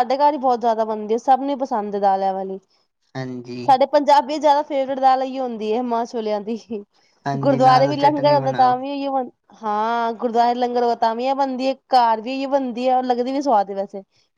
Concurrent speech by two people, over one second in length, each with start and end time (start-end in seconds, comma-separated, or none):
7.4-8.8